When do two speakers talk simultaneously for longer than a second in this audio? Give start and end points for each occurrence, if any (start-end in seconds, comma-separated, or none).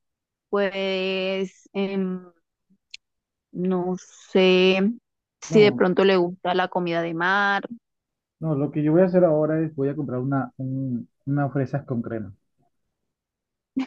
none